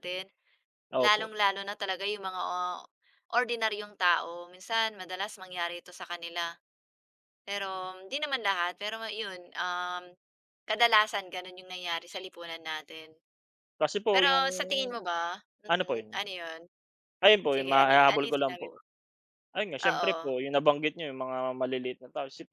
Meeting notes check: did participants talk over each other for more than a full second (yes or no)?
yes